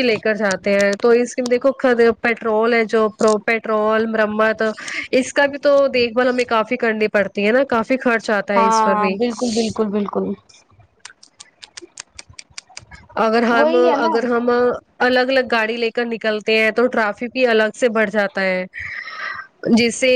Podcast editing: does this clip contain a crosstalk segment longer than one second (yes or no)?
no